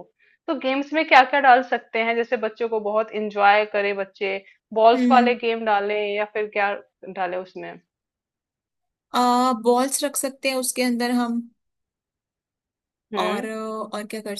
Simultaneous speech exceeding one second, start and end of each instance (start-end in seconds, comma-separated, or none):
none